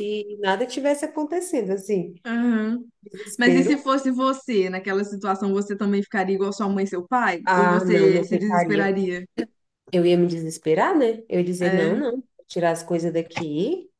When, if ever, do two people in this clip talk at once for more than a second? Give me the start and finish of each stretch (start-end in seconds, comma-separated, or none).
7.5-8.9